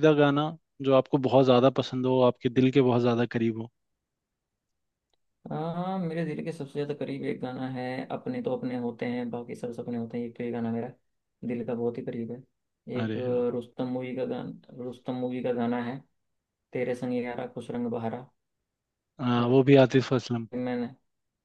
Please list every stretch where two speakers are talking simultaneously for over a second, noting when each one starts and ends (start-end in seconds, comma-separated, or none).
none